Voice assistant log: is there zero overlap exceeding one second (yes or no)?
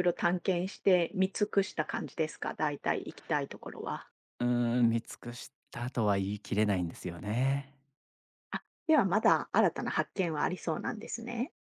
yes